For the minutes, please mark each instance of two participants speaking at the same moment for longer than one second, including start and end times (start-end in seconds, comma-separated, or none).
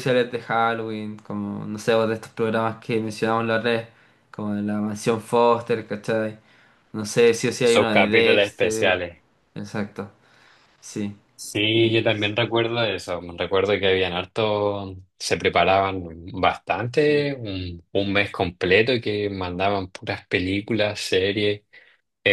7.6-9.0